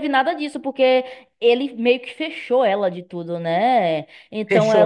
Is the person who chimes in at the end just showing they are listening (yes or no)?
no